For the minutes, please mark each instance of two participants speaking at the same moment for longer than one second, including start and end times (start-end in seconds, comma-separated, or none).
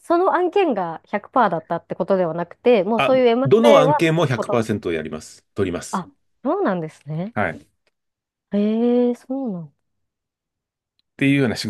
3.0-4.6